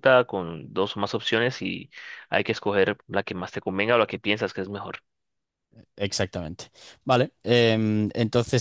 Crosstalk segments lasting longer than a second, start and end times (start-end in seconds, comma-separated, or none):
none